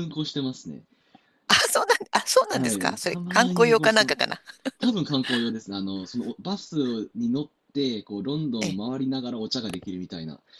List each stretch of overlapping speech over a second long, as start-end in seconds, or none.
2.5-4.2